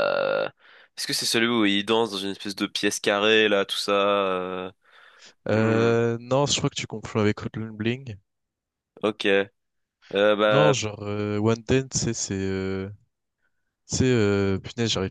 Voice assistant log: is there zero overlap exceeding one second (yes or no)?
yes